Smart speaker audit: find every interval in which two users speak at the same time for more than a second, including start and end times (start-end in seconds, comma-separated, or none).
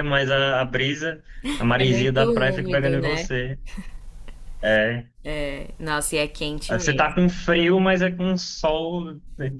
1.8-3.3